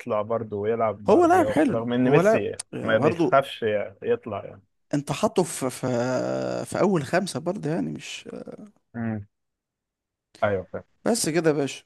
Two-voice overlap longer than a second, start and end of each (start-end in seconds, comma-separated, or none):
1.1-3.4